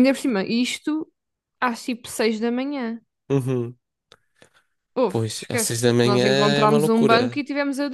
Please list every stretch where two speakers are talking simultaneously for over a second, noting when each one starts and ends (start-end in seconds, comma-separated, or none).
5.1-7.4